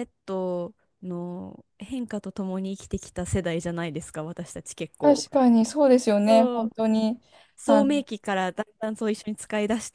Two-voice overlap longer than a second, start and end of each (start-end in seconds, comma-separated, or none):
none